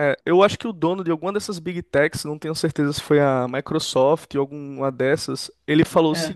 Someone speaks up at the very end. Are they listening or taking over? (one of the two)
listening